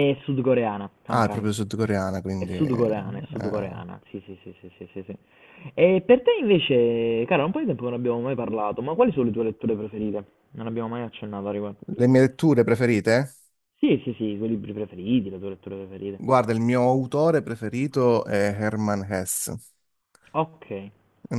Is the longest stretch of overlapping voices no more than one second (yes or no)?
no